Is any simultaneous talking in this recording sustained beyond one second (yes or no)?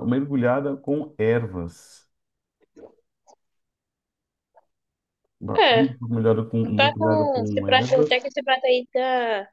yes